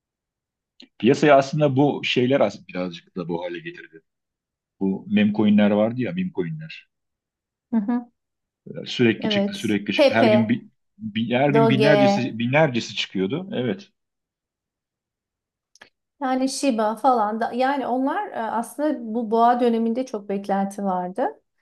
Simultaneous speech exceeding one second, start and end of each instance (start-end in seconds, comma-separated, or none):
9.2-10.6